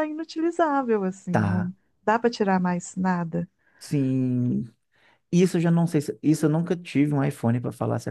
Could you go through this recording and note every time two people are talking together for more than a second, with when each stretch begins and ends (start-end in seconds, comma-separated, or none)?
none